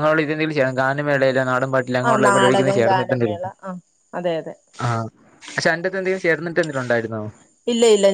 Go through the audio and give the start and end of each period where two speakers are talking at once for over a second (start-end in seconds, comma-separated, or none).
2.1-3.5